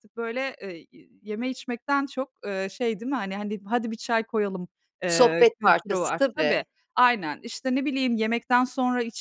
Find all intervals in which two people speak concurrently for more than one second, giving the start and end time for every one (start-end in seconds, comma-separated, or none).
5.1-6.7